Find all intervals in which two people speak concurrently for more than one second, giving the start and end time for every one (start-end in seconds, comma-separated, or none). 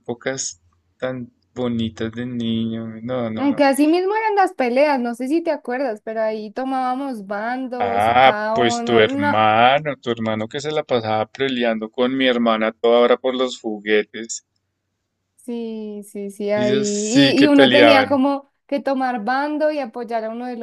7.8-9.5, 16.5-18.2